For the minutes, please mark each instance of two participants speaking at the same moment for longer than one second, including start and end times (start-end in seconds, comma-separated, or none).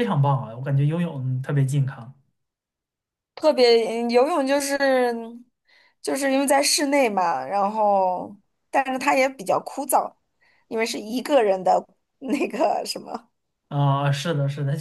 none